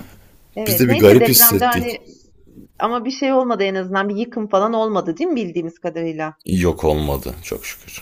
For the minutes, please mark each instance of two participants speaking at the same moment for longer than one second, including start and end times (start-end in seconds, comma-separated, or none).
0.7-2.0